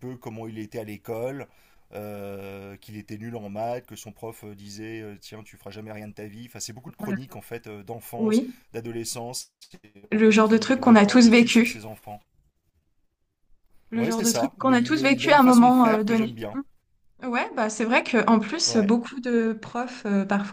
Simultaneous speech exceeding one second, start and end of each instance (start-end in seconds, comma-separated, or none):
10.1-11.8, 13.9-16.4